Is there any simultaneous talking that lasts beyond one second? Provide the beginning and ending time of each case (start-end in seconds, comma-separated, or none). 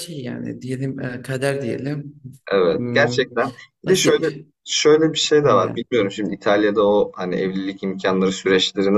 none